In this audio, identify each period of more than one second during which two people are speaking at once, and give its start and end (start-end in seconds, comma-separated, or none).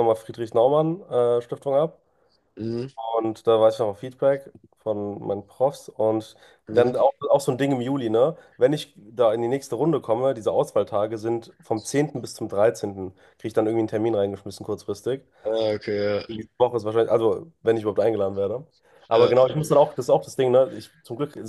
none